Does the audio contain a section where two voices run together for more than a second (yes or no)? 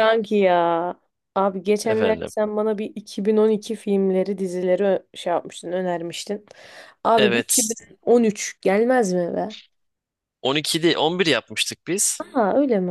no